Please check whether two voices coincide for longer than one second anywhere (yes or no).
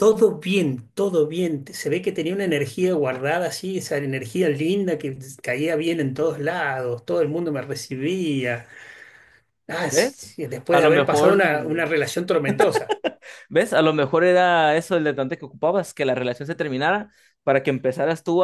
yes